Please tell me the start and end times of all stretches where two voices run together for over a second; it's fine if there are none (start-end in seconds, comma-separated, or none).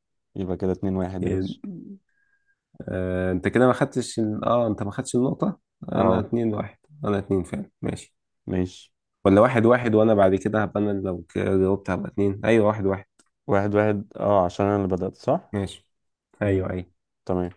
none